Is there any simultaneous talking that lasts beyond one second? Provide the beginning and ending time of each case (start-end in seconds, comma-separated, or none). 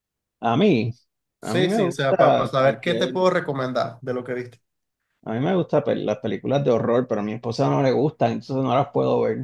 1.4-3.2